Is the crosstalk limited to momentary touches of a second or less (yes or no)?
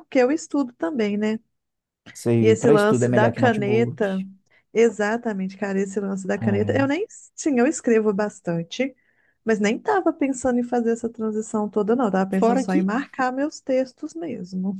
no